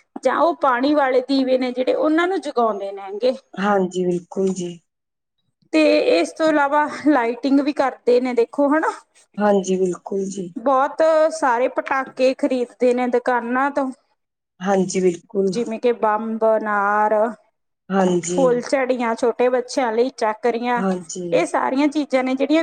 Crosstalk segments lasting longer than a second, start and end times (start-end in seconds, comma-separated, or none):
none